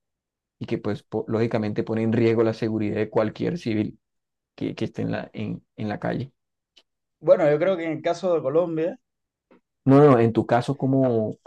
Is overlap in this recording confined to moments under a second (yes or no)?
yes